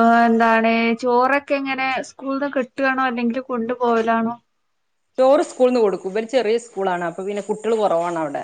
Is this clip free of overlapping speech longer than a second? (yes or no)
yes